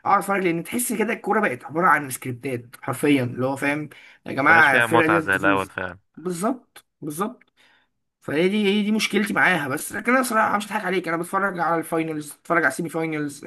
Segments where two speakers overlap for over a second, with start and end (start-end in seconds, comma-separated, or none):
4.5-5.7